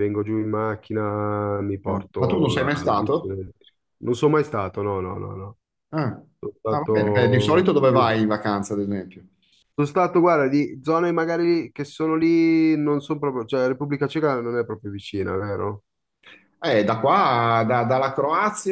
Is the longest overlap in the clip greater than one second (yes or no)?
yes